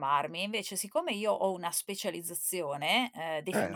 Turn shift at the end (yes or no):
no